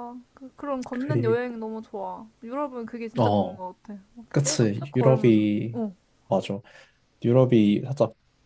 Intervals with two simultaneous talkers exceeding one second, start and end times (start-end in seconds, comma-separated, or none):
4.3-5.8